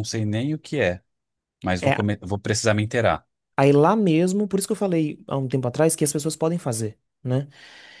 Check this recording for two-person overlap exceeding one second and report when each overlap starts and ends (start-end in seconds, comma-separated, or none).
none